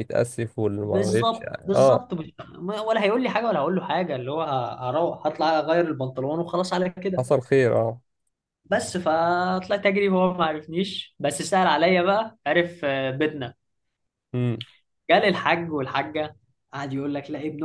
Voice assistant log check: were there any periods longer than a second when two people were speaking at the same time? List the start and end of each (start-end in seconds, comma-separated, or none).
0.8-2.0